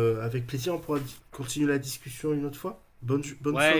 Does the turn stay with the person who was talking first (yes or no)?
no